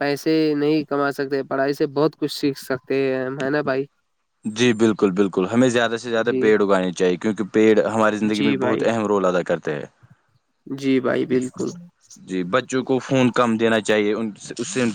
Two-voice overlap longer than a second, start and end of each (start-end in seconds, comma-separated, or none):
none